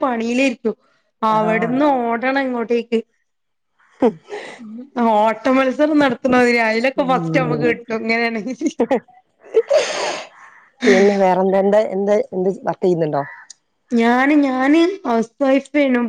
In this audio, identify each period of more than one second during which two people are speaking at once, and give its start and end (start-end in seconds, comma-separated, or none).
none